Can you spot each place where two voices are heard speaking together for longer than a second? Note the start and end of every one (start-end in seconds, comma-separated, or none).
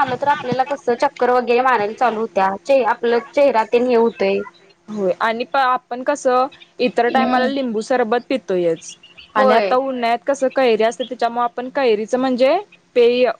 none